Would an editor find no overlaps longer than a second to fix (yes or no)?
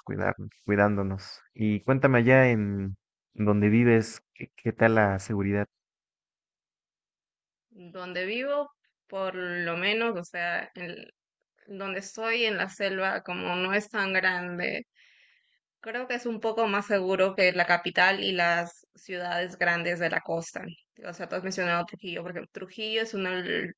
yes